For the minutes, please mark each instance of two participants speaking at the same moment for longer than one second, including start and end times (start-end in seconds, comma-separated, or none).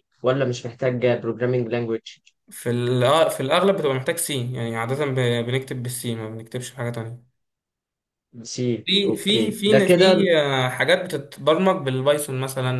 8.8-10.3